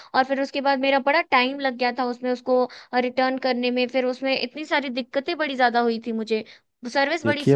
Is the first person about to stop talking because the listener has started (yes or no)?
yes